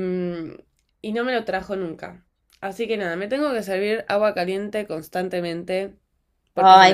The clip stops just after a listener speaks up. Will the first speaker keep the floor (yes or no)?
no